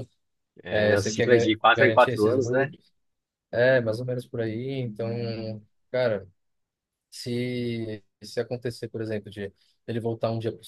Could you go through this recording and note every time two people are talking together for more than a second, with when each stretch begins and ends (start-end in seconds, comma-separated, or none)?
0.7-2.7